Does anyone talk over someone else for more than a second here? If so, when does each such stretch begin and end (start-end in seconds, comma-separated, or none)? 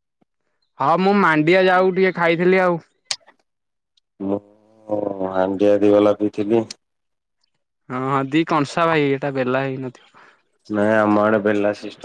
none